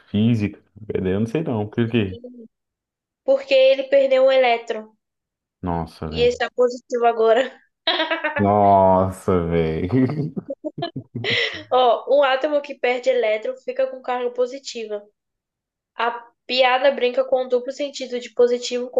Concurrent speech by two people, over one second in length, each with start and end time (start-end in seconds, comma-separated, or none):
none